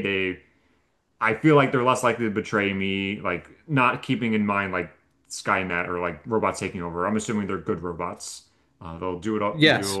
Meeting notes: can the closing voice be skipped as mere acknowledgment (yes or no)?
yes